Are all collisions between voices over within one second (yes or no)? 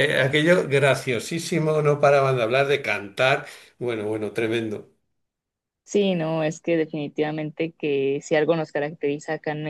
yes